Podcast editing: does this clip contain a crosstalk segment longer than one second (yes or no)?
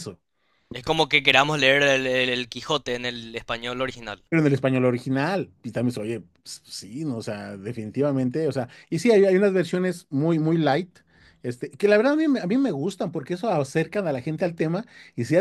no